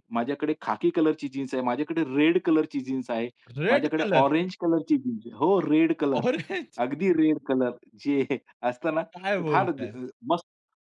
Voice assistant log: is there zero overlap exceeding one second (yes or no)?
yes